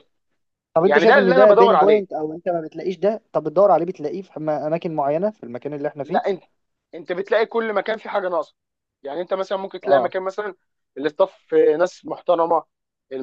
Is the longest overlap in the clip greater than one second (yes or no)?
yes